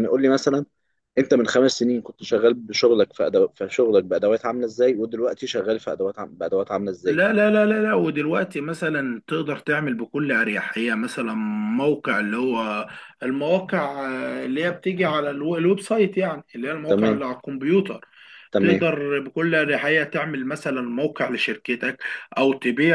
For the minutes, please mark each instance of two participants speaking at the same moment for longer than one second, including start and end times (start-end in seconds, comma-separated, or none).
none